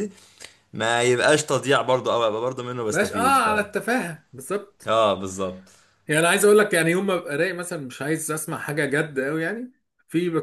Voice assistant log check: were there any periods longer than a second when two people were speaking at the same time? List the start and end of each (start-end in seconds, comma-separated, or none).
none